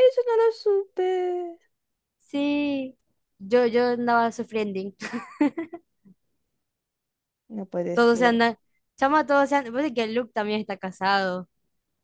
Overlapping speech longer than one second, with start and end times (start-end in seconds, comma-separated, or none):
none